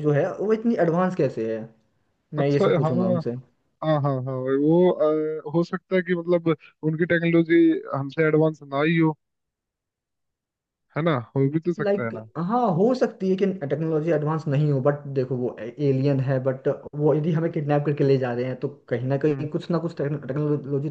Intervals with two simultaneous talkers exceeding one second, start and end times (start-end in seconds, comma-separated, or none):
none